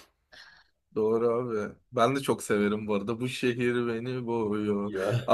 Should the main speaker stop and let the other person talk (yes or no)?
no